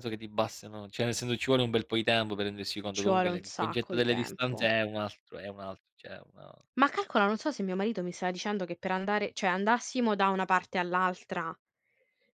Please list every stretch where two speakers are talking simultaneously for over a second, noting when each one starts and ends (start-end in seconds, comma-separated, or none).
2.9-4.7